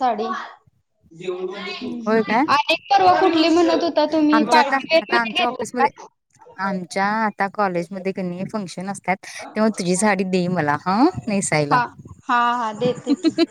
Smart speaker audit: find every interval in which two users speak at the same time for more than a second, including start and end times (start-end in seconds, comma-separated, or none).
4.3-5.9